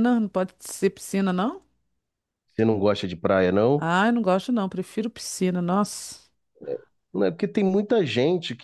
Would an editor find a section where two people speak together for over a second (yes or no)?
no